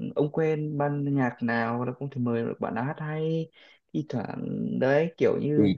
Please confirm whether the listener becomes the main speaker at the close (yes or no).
no